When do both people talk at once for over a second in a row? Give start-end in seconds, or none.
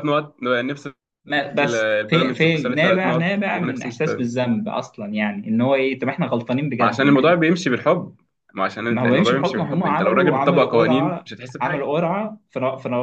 1.6-4.2, 8.9-11.9